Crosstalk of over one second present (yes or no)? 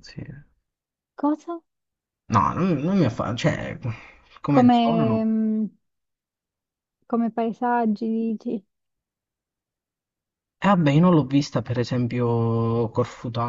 no